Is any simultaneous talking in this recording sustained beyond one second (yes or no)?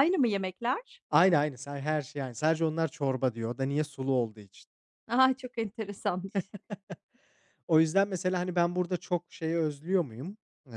no